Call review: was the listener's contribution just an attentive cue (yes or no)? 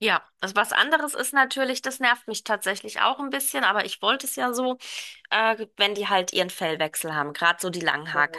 yes